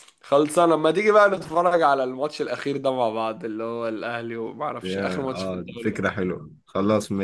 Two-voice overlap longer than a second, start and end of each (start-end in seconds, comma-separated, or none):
4.8-6.1